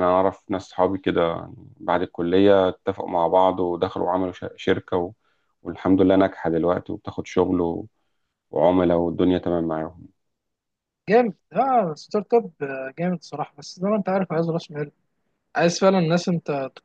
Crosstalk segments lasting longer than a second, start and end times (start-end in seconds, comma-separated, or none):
none